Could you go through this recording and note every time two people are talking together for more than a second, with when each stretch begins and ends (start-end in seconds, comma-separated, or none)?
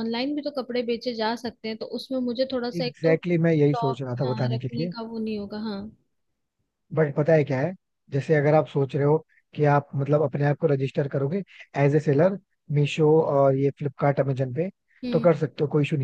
2.8-4.9